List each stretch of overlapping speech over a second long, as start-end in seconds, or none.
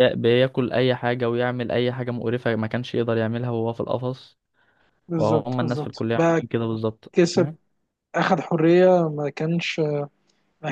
5.2-6.4